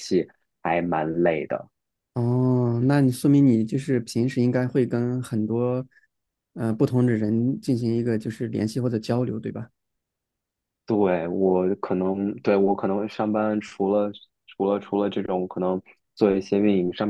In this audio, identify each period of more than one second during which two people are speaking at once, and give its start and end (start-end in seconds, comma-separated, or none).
none